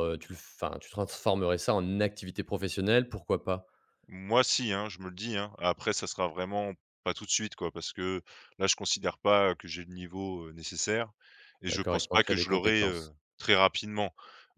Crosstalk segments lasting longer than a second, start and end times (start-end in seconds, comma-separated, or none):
11.7-13.1